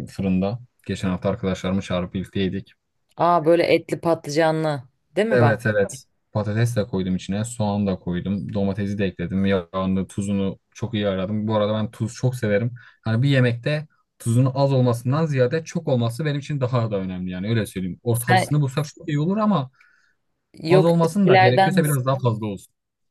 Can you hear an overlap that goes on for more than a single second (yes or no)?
yes